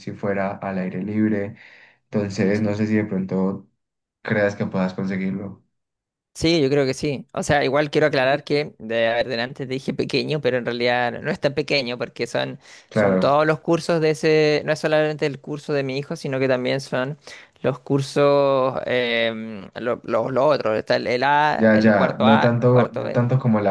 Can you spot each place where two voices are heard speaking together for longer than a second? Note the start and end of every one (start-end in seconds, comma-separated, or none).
21.5-23.2